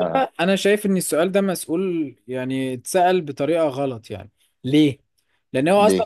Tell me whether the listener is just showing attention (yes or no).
yes